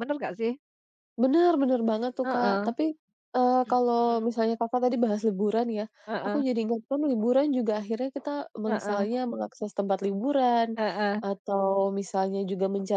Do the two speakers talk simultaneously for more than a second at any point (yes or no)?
no